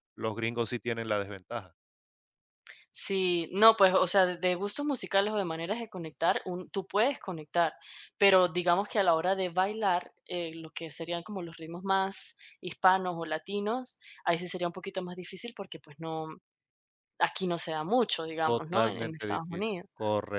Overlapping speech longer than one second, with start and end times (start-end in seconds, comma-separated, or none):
18.4-19.9